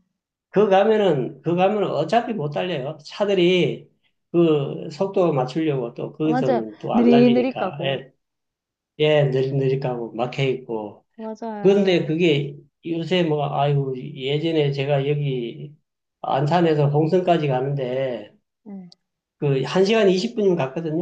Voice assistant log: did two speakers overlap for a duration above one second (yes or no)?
yes